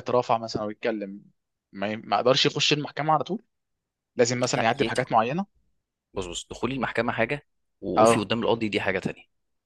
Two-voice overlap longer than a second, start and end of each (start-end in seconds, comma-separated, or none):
none